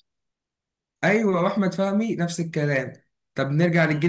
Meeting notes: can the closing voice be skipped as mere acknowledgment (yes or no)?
yes